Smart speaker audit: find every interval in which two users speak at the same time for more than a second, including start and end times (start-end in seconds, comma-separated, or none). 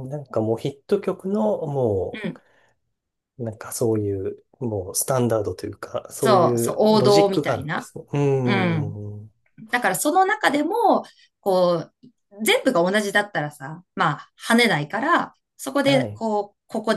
6.2-7.9